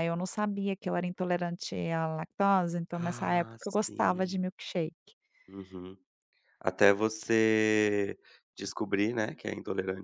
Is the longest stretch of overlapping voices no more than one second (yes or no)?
no